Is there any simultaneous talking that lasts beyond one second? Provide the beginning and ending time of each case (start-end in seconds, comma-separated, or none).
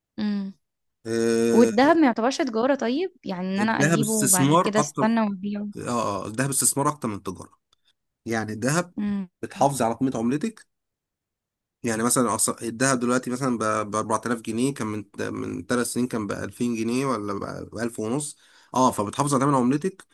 3.6-5.0